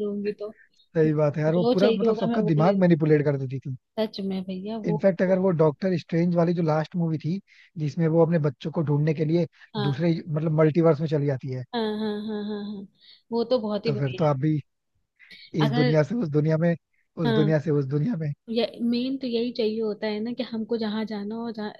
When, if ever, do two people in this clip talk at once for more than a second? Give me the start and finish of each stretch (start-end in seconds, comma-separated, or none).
1.1-2.9